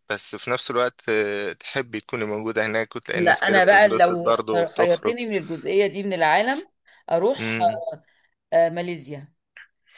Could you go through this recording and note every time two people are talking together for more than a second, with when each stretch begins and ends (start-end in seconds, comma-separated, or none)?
3.1-5.2